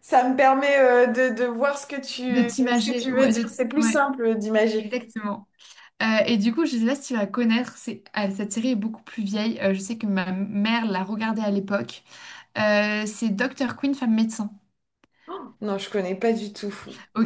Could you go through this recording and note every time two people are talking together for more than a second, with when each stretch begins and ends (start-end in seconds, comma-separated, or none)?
2.3-4.0